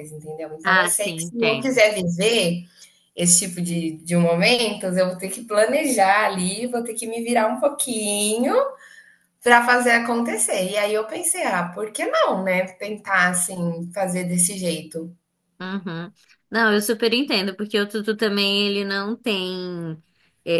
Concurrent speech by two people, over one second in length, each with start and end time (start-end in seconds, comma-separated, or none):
0.6-1.8